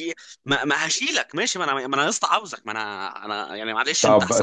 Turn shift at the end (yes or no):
yes